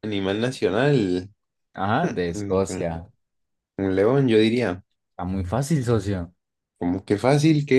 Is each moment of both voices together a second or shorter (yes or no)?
yes